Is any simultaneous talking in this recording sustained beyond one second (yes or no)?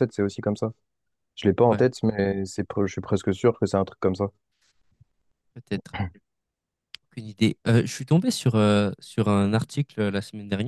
no